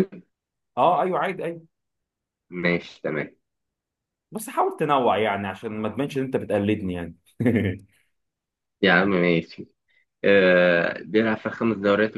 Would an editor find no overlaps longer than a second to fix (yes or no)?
yes